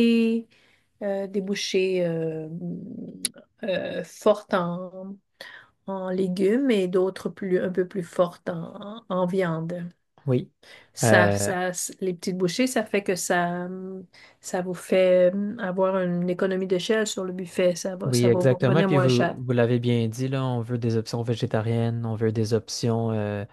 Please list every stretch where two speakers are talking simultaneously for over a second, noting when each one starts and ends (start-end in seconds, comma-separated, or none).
18.0-19.4